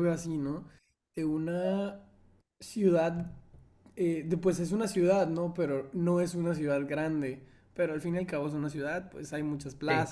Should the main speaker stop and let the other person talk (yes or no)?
no